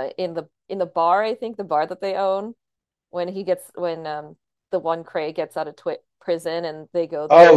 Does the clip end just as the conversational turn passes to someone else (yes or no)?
yes